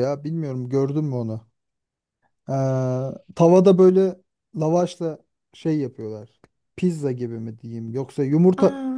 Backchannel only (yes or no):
yes